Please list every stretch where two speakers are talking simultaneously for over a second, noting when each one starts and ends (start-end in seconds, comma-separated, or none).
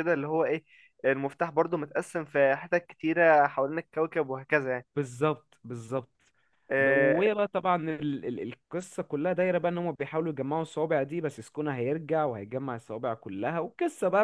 none